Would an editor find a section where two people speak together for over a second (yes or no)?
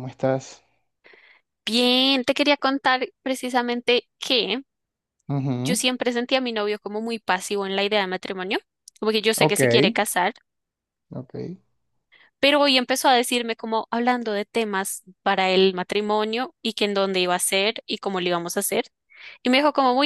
no